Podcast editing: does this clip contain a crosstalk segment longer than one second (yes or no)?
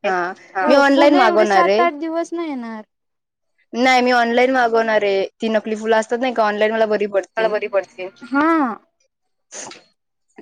yes